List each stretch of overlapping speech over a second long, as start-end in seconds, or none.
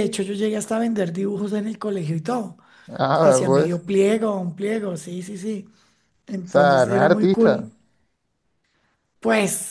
6.4-7.7